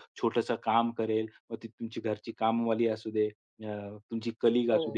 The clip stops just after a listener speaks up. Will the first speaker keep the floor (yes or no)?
yes